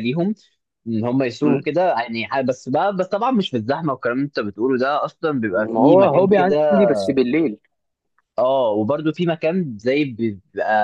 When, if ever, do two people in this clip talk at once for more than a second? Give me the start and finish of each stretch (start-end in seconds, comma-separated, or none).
5.5-6.8